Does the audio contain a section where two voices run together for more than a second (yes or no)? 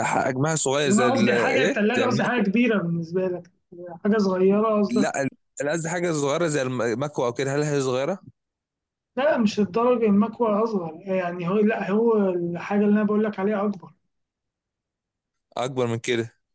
yes